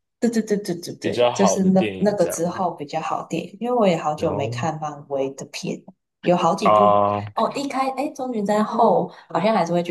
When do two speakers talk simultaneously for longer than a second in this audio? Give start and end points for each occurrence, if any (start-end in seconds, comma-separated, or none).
1.0-2.4